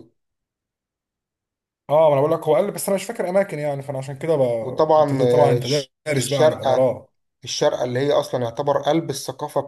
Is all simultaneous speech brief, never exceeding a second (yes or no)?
no